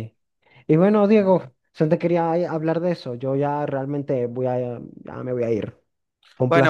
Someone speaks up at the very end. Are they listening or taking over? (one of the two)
taking over